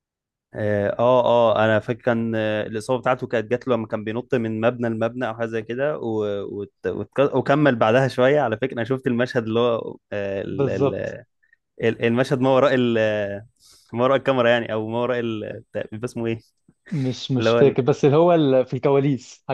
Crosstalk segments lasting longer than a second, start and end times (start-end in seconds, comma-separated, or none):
none